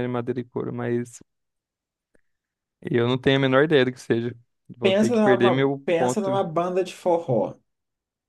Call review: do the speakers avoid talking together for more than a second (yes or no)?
no